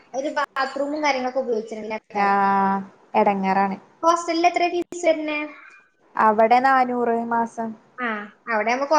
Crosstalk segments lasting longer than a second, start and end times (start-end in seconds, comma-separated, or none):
none